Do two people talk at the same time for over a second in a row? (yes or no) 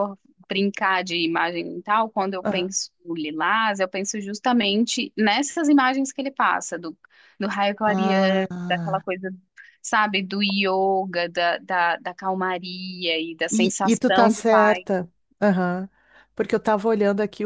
yes